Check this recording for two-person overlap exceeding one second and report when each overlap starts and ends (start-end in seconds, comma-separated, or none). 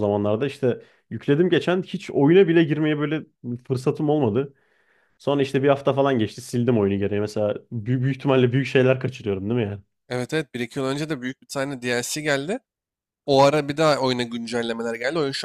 none